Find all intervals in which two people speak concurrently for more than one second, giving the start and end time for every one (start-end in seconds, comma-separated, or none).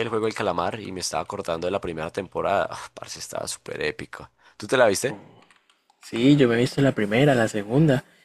none